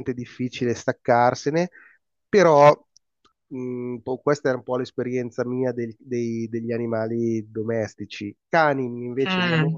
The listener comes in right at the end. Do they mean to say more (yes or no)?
no